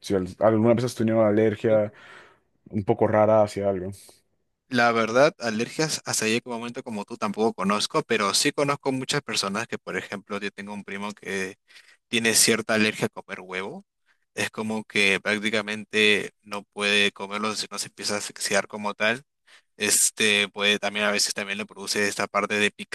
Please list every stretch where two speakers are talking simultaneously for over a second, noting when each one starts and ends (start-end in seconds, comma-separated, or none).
none